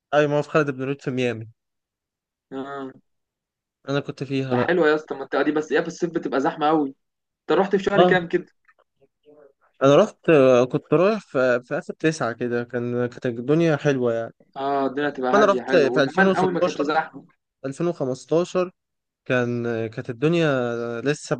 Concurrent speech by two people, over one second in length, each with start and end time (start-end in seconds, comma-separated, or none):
15.3-16.9